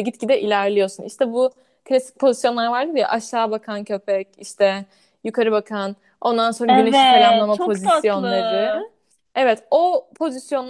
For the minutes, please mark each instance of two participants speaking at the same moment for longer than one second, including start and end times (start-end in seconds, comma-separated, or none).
6.7-8.7